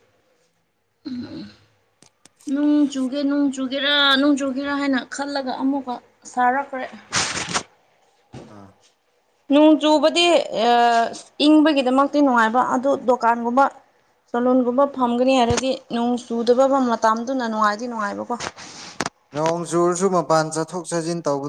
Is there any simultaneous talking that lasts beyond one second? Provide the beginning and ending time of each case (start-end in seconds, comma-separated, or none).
none